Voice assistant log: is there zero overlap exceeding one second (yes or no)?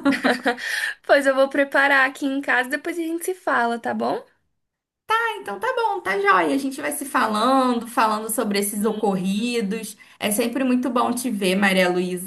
yes